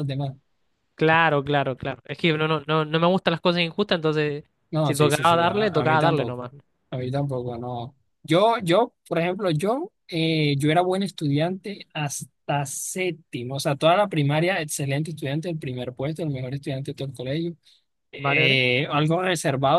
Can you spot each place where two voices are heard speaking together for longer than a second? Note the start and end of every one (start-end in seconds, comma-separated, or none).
4.8-6.4